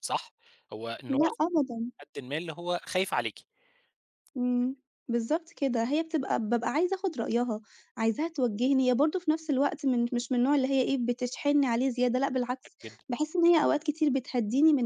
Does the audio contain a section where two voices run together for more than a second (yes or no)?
no